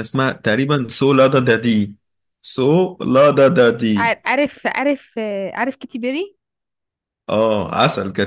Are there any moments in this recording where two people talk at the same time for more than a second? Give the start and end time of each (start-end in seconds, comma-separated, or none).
none